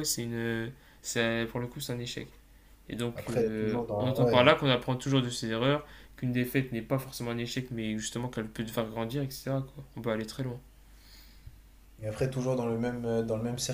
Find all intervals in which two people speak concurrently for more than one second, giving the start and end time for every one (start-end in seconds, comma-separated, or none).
3.1-4.4